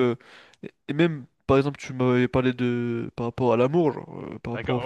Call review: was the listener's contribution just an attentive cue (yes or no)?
no